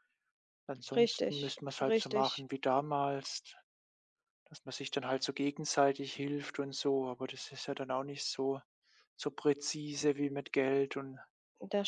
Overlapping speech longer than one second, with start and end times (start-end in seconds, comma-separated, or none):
1.0-2.5